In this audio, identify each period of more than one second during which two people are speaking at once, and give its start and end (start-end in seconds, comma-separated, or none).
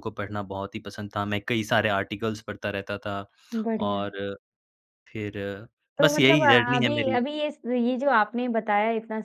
6.0-7.2